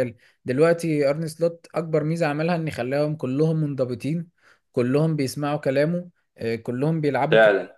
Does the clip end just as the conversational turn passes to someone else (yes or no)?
no